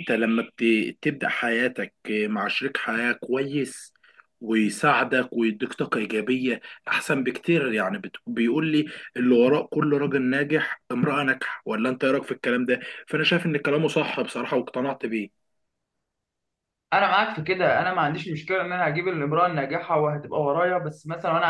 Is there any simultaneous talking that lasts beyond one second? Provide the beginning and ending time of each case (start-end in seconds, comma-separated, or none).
none